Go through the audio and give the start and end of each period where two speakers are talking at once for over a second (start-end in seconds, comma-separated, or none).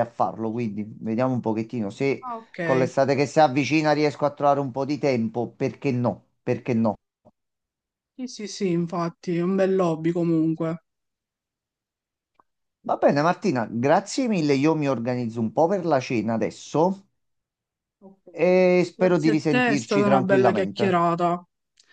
18.9-21.1